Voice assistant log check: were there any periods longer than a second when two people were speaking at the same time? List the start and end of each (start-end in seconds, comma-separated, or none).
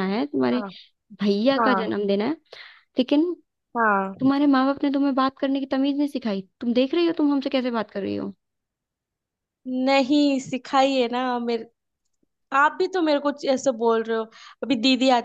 none